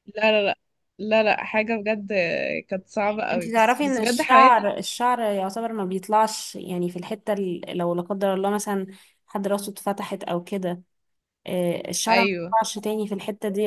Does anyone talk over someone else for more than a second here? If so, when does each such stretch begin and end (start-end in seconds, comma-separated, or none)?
3.3-4.6